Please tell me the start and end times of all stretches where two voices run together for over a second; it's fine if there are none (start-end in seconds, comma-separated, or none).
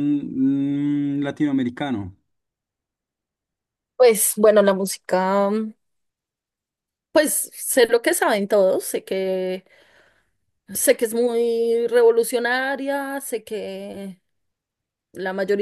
none